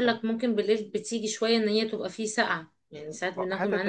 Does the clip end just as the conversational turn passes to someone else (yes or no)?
yes